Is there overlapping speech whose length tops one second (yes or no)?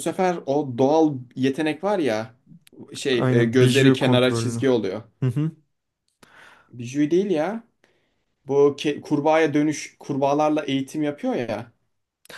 yes